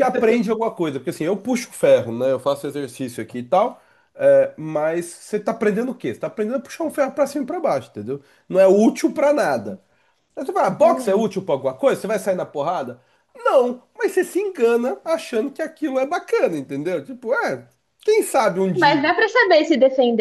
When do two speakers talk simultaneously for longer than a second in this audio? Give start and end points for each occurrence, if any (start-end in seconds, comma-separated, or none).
none